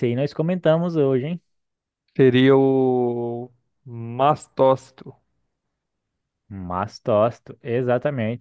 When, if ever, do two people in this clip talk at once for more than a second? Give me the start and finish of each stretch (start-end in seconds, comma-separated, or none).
none